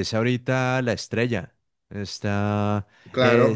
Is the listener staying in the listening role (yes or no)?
no